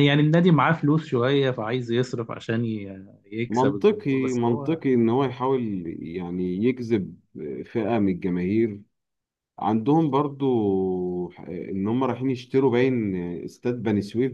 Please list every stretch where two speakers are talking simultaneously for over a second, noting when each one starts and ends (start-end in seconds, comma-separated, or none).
3.5-4.8